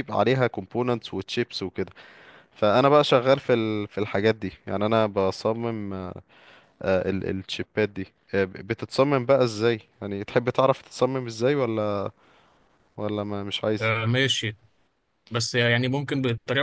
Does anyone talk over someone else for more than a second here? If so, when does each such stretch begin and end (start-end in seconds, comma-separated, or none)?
none